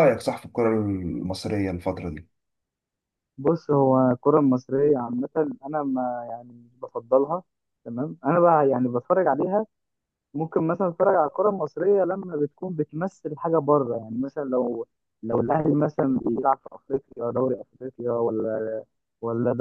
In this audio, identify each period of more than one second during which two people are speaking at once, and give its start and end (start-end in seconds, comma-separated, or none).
none